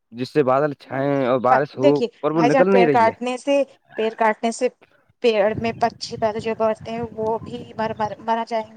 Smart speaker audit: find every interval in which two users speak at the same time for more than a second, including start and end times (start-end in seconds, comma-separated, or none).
0.9-3.1